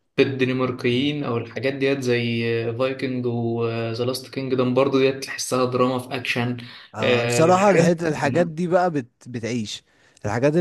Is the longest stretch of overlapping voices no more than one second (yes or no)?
no